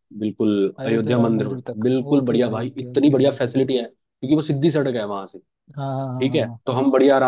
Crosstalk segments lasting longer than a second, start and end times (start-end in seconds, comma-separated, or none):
0.8-3.4